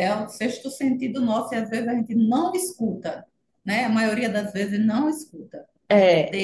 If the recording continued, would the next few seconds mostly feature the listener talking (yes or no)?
no